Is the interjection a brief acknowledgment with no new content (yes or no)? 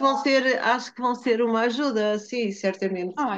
no